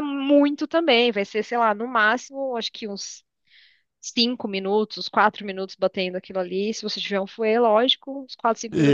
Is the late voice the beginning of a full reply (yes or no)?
yes